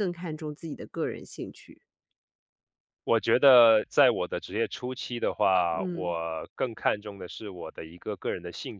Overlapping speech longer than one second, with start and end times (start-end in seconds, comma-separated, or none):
none